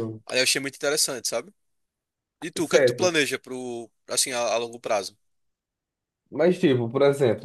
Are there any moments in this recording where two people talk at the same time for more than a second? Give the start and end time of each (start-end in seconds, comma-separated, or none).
none